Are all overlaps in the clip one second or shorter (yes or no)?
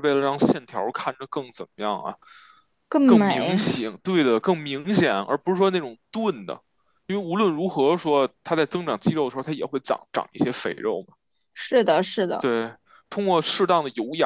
yes